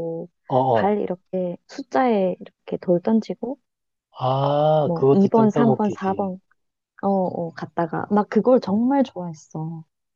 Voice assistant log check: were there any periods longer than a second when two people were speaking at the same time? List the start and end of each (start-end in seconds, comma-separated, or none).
4.8-6.3